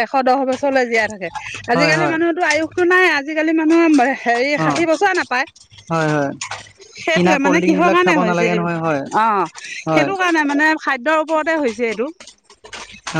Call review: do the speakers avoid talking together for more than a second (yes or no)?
no